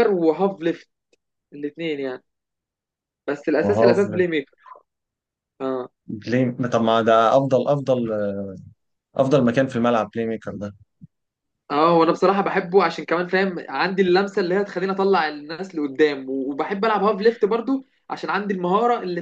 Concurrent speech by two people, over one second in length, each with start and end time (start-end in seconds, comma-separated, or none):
none